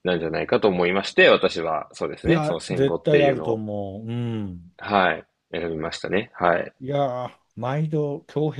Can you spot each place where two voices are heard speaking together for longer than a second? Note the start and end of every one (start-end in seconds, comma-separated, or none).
2.2-3.6